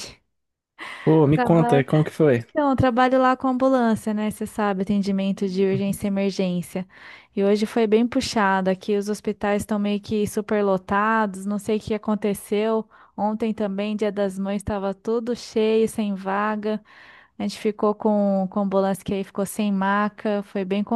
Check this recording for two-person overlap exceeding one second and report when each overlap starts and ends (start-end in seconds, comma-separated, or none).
none